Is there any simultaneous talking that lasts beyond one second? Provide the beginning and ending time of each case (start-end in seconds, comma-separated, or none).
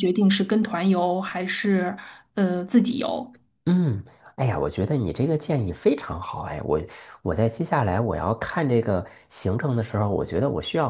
none